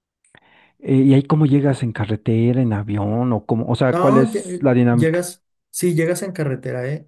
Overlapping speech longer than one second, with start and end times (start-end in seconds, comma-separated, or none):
3.9-5.3